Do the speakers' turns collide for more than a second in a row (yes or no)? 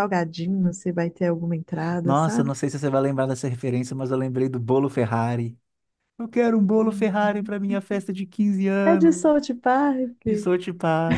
yes